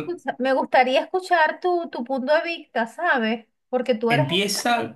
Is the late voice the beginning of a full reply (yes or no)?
yes